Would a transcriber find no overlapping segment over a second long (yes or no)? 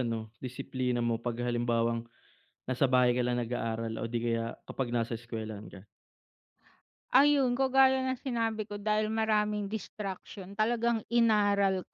yes